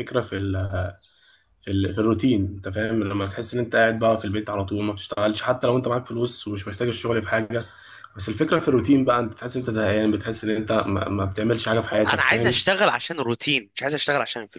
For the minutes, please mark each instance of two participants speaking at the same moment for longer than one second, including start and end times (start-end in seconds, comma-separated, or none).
none